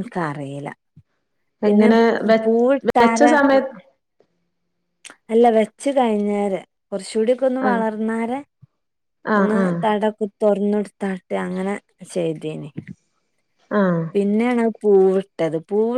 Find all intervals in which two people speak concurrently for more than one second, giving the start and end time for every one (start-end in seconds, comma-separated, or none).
none